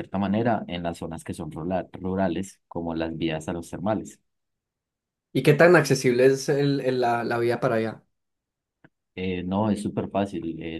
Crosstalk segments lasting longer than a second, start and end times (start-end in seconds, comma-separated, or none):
none